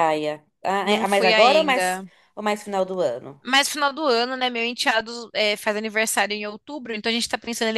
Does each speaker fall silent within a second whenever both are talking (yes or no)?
no